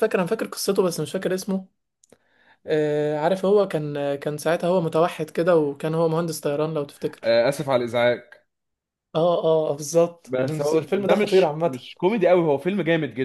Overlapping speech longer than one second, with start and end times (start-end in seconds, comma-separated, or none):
10.2-11.8